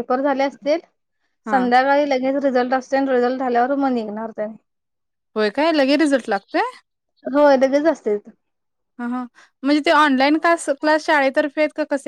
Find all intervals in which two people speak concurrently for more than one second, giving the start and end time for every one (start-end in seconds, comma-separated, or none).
none